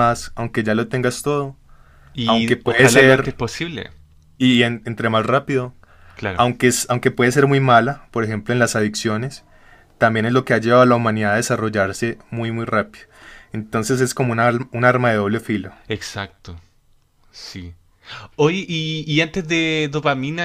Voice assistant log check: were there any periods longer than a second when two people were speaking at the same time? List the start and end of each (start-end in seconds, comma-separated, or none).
2.2-3.4